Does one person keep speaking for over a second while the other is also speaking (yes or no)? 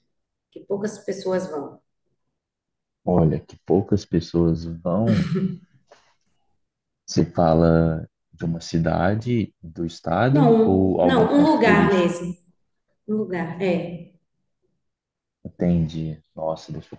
yes